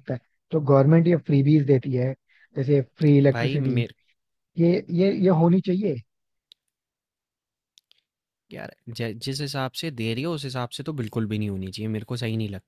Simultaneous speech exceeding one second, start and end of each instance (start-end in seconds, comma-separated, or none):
none